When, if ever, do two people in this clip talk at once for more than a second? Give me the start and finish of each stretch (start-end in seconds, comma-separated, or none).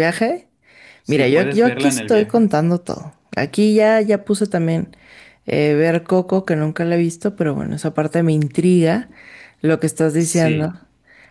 1.1-2.5